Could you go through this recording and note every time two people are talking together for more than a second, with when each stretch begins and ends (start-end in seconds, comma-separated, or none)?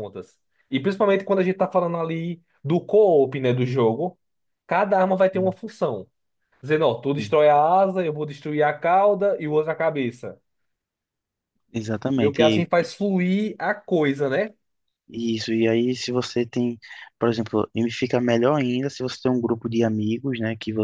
none